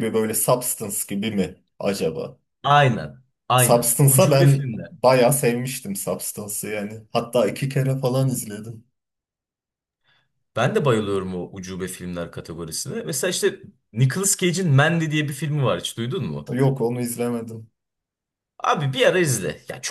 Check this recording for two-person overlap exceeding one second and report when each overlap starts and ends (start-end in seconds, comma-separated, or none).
3.5-4.9